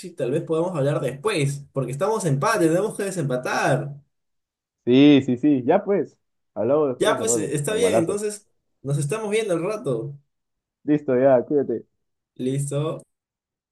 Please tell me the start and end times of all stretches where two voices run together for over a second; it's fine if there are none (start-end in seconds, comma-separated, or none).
7.0-8.2